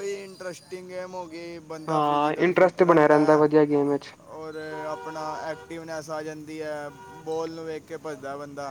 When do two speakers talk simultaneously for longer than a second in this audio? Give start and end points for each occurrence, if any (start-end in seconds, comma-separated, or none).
1.9-3.4